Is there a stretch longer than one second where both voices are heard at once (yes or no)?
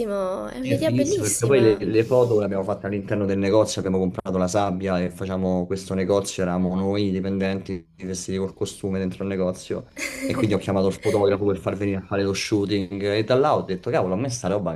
yes